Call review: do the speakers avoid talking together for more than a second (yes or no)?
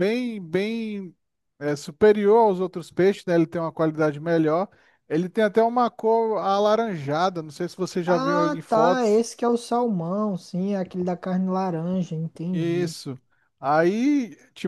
no